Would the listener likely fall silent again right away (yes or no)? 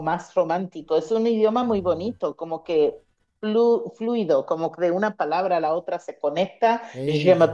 yes